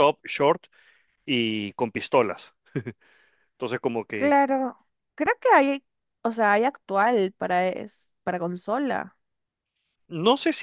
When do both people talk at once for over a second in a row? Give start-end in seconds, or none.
none